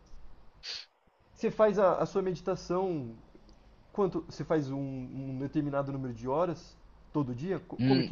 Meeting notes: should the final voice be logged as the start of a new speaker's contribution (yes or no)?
yes